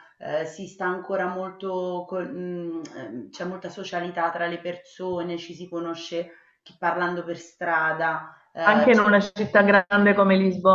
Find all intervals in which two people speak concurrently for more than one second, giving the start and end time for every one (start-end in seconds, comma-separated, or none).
none